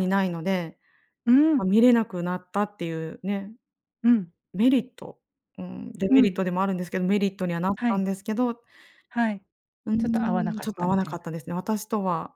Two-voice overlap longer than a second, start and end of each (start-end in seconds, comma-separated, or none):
10.0-11.3